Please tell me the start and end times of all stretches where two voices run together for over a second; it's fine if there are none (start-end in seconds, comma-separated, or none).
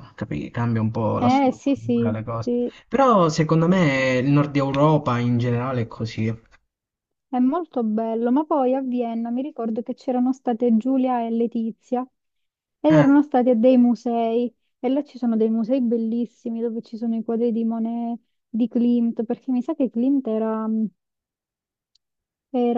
1.2-2.5